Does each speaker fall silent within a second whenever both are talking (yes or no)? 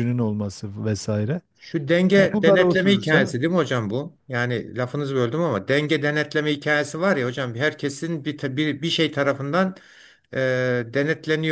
no